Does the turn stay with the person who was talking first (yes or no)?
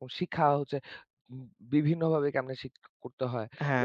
no